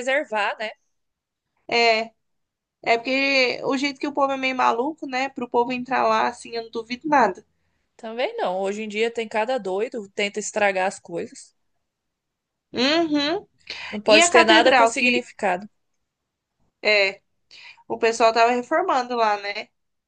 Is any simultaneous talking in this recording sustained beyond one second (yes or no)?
yes